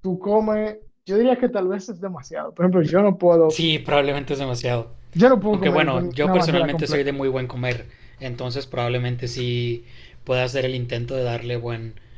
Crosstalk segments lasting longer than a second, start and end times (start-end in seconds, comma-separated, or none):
5.5-7.1